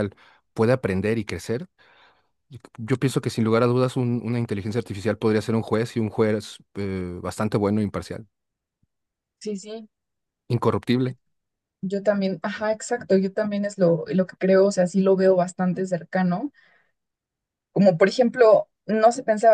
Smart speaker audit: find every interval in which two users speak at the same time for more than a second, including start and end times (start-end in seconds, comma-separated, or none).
none